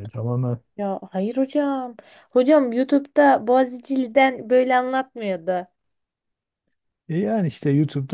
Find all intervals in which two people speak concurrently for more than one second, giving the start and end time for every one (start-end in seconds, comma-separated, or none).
none